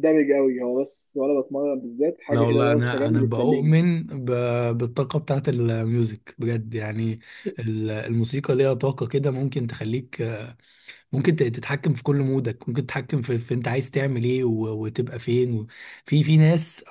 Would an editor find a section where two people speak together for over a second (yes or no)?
yes